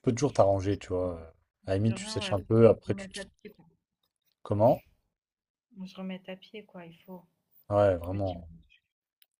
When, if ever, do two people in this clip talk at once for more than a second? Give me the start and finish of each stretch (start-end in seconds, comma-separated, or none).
1.8-3.2